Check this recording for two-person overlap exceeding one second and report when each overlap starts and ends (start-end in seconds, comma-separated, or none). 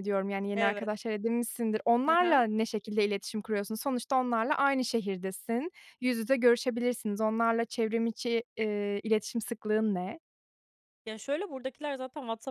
none